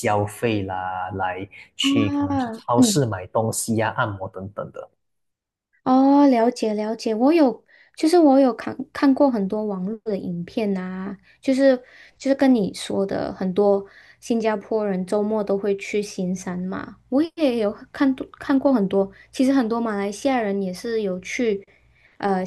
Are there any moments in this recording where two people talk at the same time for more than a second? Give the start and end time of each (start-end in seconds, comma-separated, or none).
1.8-3.1